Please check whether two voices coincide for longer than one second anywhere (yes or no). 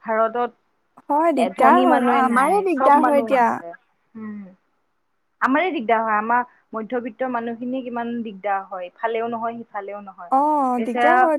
yes